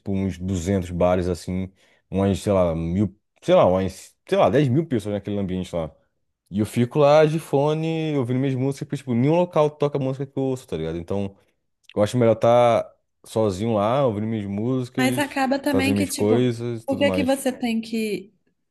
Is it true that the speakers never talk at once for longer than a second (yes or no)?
no